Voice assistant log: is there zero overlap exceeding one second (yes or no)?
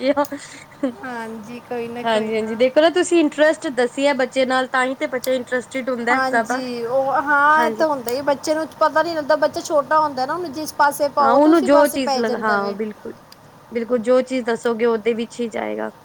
no